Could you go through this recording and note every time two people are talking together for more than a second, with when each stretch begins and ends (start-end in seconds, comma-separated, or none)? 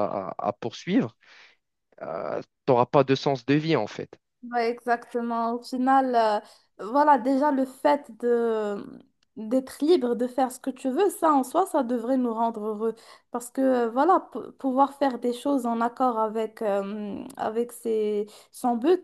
none